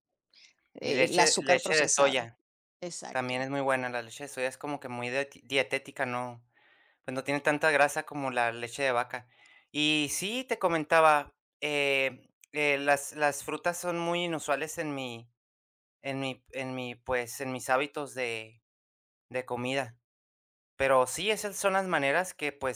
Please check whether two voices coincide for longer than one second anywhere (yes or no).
yes